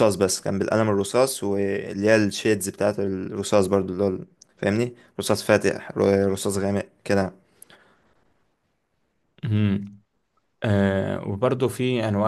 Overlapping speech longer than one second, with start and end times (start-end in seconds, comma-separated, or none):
none